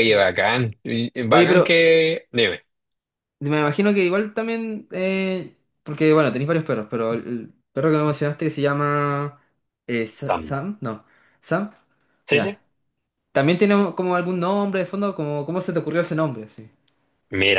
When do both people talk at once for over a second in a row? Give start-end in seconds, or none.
none